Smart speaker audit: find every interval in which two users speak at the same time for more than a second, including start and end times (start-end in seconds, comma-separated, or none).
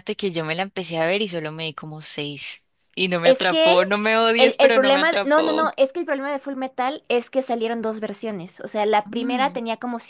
4.4-5.7